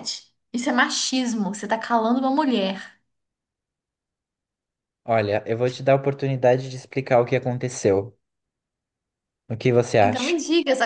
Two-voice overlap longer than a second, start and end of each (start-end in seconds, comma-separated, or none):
none